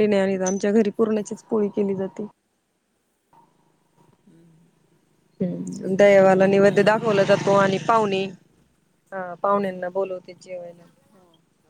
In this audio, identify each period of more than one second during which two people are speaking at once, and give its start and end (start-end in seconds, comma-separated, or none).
6.6-8.2